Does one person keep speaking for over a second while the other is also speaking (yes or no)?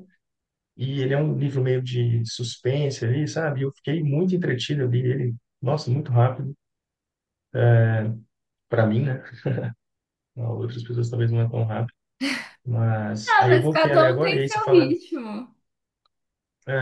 yes